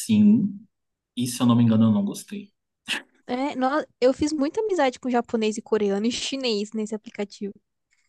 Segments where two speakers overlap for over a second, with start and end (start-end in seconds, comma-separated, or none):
none